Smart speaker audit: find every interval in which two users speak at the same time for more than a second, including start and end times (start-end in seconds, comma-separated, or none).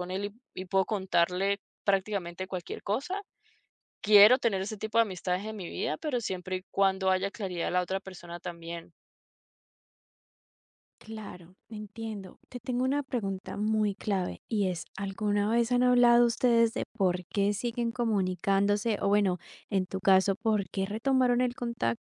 none